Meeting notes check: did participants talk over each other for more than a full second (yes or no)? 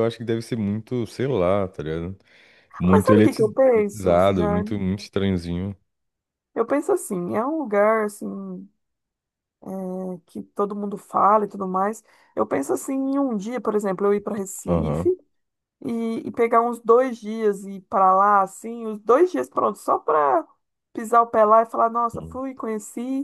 yes